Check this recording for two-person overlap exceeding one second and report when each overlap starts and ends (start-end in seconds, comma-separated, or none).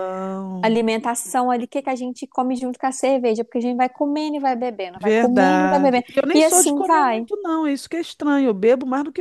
4.9-7.2